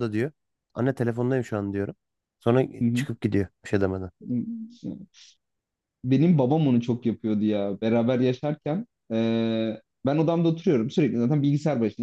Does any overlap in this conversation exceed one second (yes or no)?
no